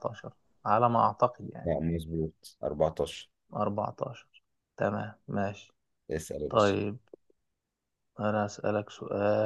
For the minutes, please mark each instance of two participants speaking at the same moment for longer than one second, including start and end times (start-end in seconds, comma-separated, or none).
none